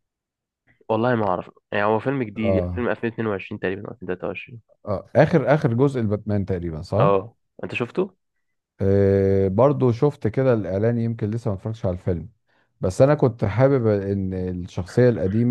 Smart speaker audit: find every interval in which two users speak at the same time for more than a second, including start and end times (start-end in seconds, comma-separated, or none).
none